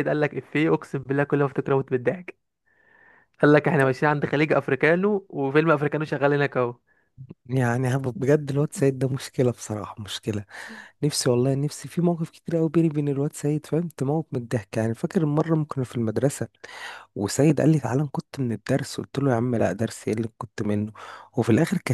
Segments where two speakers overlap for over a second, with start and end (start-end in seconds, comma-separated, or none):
none